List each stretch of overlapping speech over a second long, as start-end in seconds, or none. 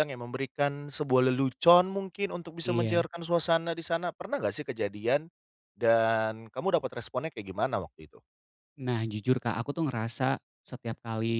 none